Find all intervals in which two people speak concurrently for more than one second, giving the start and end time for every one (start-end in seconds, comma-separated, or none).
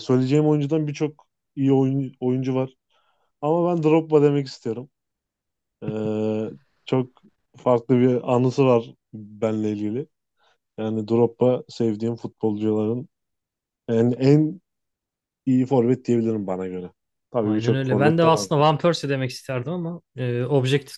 17.4-18.7